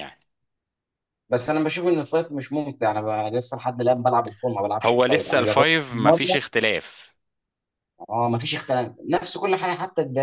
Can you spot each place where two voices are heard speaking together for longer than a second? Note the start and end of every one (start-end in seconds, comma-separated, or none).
4.8-6.4